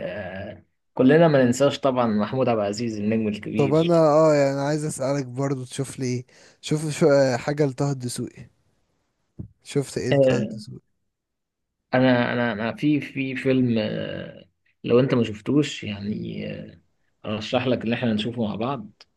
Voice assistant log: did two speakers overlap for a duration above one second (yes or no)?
no